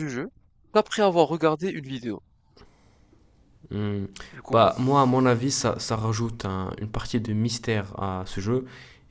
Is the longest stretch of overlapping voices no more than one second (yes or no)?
yes